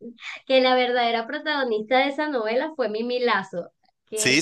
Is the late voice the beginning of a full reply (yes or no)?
yes